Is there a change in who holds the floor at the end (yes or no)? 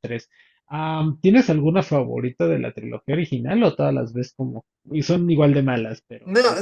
yes